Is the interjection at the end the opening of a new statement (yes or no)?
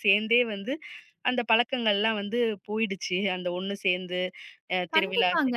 yes